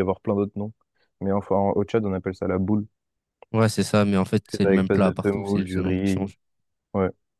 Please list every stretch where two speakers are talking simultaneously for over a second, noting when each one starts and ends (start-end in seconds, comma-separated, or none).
4.5-6.3